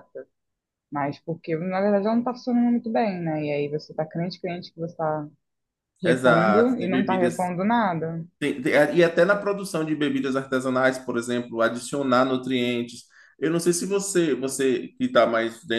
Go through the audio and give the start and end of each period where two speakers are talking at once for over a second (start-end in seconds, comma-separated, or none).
6.0-7.5